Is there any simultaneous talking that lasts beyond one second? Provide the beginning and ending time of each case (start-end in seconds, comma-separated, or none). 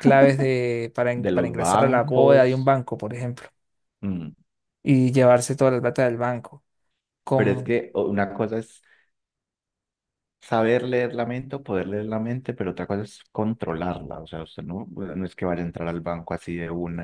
1.1-2.7